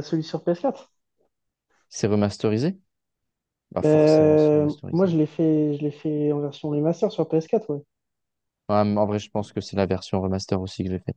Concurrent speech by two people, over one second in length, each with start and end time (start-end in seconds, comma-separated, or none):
3.8-5.1